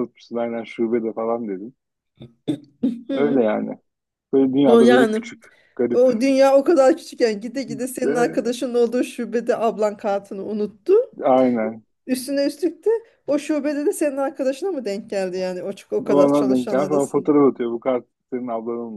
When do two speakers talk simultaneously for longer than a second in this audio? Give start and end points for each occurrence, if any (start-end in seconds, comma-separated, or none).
16.1-17.3